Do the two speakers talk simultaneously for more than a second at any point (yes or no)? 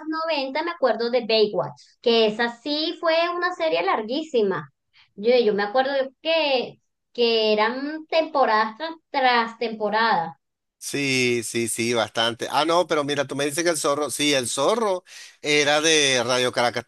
no